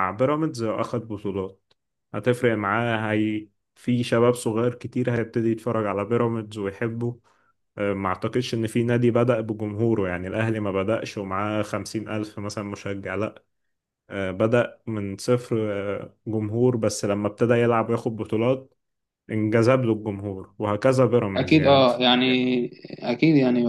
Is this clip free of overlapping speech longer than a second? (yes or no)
yes